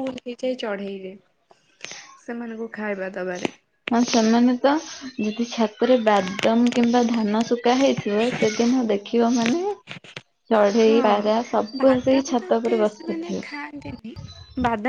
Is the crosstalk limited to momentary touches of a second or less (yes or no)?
no